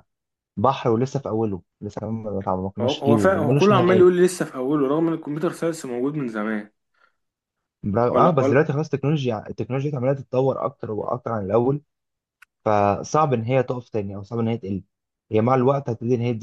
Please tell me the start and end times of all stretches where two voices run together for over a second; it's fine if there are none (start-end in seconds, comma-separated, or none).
2.8-4.1